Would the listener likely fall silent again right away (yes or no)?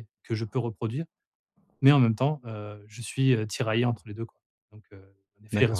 no